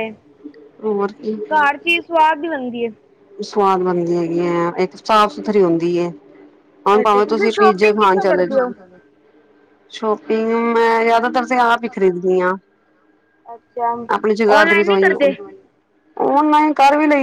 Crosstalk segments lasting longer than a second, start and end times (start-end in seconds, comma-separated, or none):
7.0-8.6